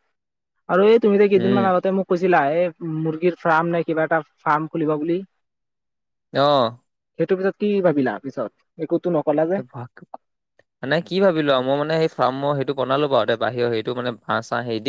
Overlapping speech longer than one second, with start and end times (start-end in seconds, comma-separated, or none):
none